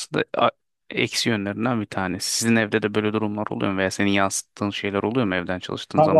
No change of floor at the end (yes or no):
no